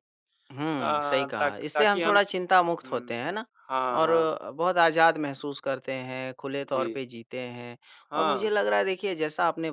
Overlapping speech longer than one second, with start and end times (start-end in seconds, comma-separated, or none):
0.8-2.2